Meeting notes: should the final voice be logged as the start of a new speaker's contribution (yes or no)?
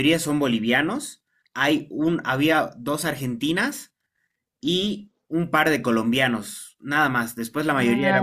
no